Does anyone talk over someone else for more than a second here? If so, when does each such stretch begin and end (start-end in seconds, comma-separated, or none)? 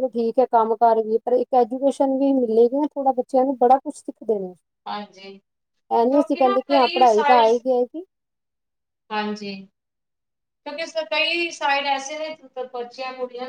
6.0-7.6